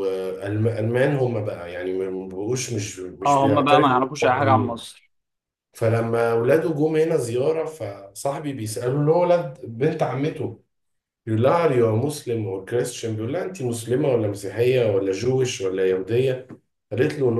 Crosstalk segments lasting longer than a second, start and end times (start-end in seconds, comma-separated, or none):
3.3-4.8